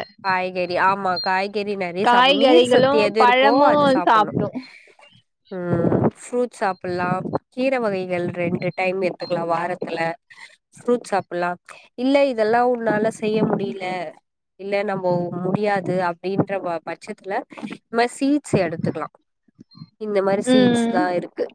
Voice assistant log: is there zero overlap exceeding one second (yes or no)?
no